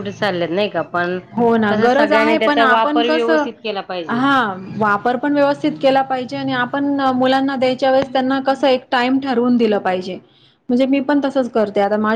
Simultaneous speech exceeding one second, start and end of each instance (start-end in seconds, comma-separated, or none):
1.7-3.4